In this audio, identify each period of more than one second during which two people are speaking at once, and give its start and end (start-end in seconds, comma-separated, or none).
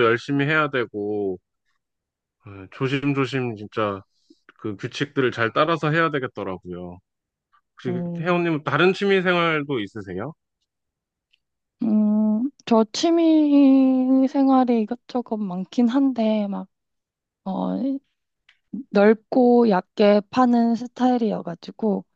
none